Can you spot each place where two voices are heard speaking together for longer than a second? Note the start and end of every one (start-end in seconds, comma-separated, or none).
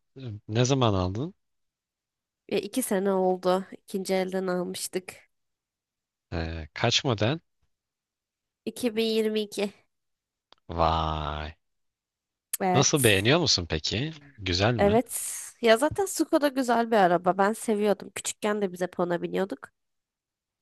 none